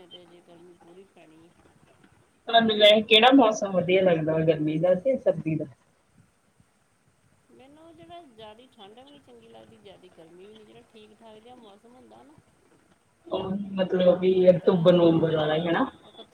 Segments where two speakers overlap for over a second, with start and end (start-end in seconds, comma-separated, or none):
14.4-15.6